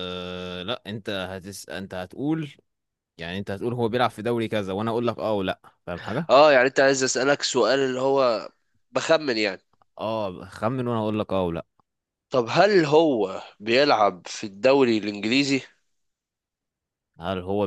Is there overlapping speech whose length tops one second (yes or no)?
no